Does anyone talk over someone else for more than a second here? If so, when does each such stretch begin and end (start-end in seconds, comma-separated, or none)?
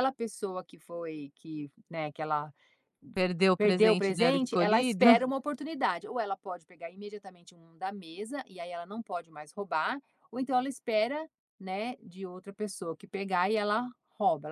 3.6-5.1